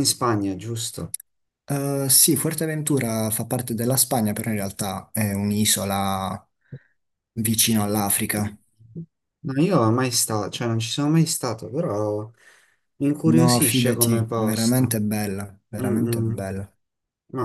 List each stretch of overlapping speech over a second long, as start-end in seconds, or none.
13.2-15.1